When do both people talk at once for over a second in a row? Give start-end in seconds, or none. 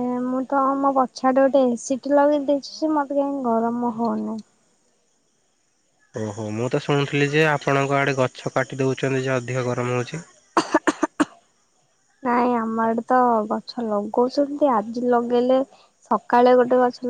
none